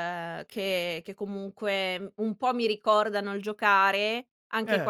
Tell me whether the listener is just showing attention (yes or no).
yes